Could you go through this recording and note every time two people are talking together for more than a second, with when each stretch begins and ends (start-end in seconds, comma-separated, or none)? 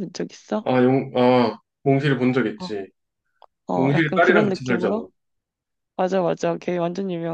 3.7-5.0